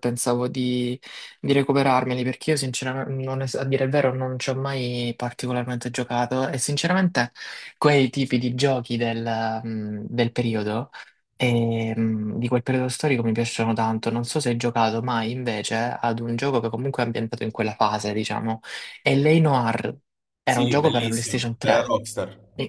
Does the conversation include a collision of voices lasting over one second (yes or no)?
yes